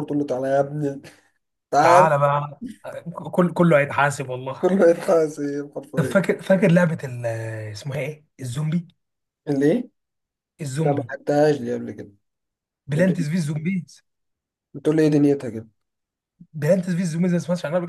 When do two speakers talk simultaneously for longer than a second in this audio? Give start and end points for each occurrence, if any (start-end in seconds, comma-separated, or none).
none